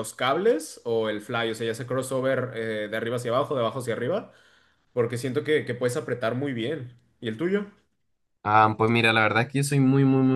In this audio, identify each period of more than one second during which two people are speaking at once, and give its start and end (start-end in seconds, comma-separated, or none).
none